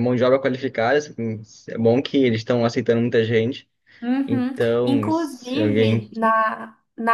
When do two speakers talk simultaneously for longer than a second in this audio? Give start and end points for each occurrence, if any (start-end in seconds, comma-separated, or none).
4.3-6.1